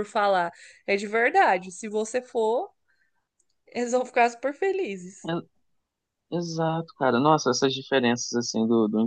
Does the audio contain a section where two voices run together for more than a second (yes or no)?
no